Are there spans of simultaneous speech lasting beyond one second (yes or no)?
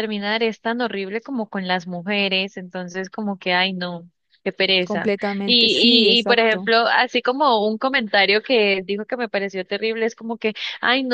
yes